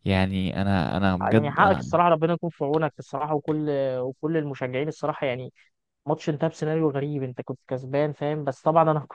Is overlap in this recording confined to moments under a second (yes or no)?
yes